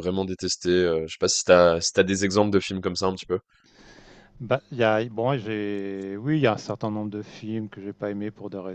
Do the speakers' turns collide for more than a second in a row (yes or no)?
no